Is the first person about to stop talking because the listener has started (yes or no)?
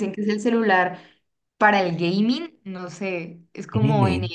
no